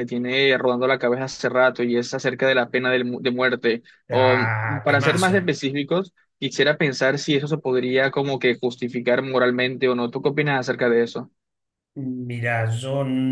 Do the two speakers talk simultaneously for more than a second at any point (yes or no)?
yes